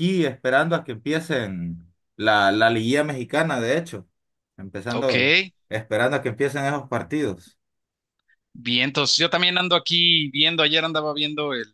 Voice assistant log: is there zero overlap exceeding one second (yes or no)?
yes